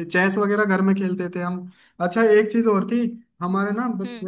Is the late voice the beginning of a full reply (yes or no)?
no